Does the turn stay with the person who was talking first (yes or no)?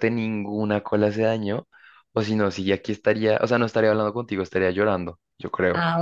no